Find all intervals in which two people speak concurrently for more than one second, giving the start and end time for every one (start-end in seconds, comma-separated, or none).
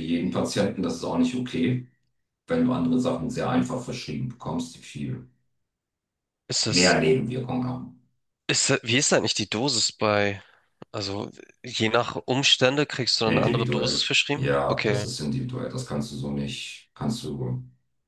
13.3-15.1